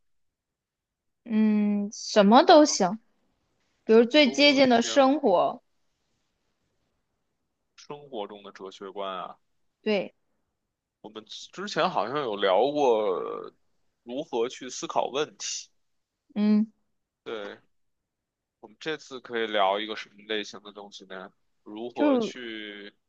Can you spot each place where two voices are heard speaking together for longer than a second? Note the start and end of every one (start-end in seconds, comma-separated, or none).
3.9-5.1